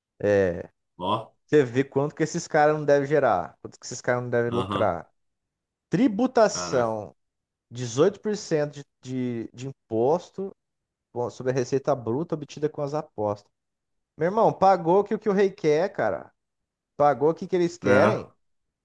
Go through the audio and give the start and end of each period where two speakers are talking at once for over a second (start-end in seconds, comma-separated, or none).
none